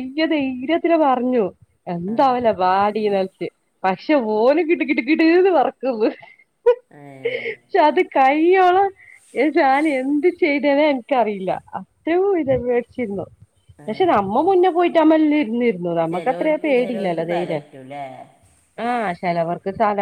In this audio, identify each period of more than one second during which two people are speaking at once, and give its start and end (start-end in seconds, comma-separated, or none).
16.1-17.6